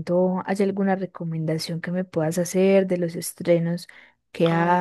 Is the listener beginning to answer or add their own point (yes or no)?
yes